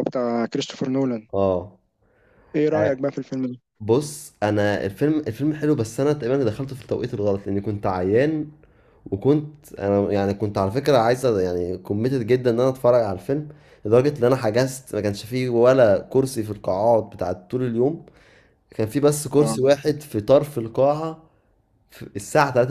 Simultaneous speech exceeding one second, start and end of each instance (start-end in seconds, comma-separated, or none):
none